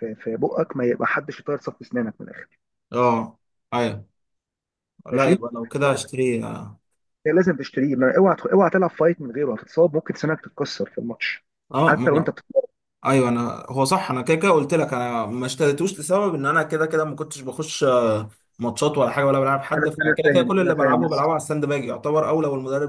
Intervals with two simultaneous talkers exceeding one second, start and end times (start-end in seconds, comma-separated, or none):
19.8-21.2